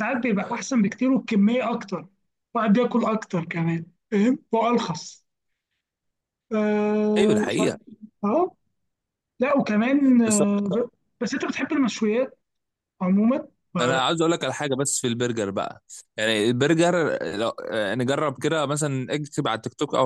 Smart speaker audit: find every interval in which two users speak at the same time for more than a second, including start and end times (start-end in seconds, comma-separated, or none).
none